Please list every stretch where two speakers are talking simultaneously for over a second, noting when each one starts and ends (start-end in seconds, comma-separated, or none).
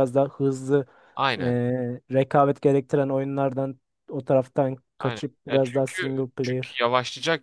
5.0-6.8